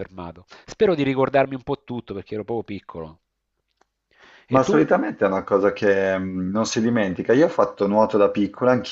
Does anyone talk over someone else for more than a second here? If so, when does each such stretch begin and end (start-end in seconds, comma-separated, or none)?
none